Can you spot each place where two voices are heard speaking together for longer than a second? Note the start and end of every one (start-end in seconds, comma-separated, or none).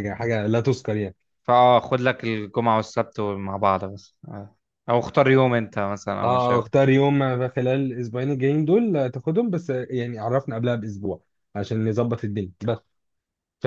none